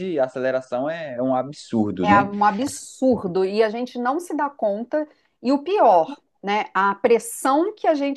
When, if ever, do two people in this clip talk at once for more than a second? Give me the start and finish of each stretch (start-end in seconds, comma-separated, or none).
none